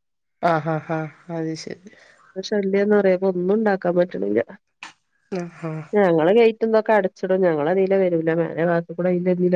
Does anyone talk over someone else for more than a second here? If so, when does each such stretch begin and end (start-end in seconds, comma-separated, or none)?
none